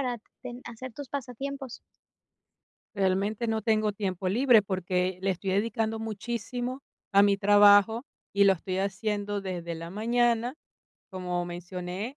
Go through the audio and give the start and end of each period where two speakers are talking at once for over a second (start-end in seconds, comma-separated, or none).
none